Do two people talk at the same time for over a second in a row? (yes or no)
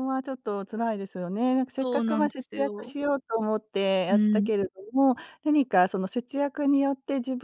yes